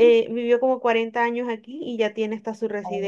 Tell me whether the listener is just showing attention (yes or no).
yes